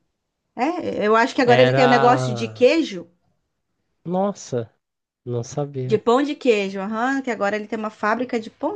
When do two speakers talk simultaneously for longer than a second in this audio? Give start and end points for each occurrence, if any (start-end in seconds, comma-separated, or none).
1.5-2.7